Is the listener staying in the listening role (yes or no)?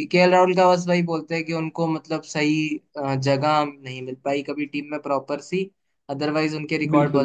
yes